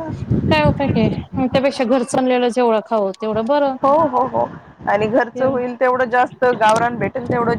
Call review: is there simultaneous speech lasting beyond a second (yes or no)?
no